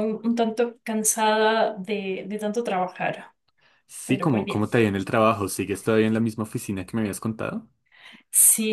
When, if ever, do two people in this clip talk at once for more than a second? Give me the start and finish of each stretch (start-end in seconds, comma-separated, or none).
none